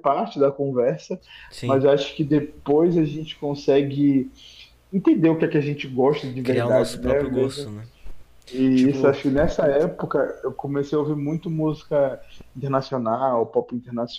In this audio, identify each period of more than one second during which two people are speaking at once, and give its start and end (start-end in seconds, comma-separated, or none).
6.4-7.7